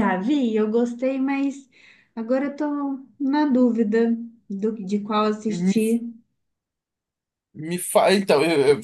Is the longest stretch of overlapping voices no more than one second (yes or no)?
yes